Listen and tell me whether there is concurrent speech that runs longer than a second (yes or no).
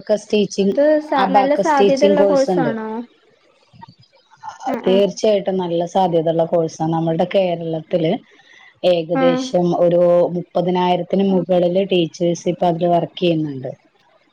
yes